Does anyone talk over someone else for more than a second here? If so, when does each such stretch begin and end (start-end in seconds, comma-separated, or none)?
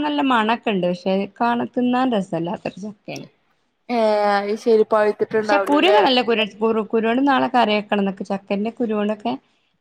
none